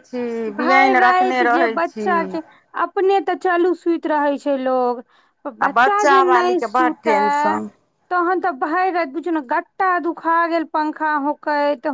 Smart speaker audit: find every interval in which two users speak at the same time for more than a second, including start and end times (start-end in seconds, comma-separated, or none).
0.6-2.1, 5.6-7.6